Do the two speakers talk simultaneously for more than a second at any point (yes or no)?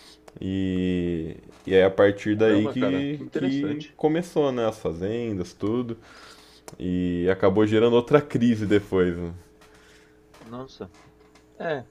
yes